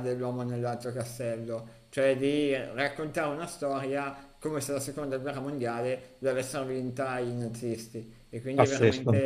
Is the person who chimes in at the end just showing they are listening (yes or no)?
yes